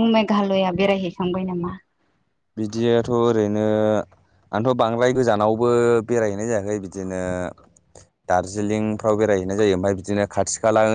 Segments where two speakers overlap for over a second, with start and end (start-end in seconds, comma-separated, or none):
none